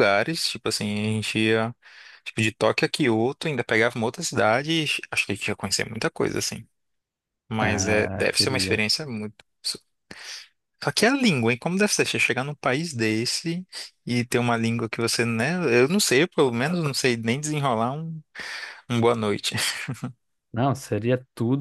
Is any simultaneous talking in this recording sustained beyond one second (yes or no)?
yes